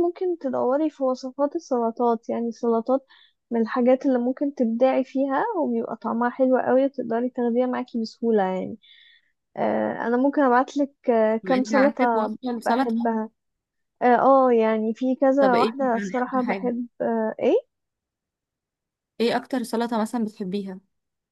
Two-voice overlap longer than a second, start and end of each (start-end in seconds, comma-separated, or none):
11.4-13.1, 15.4-16.7